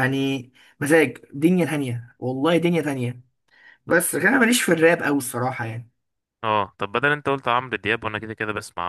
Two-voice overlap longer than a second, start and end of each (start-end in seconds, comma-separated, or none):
none